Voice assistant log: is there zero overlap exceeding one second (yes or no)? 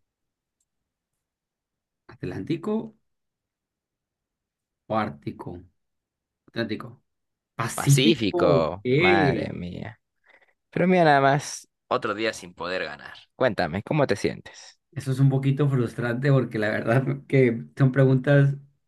no